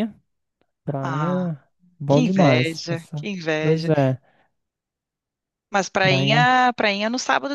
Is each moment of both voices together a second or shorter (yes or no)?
no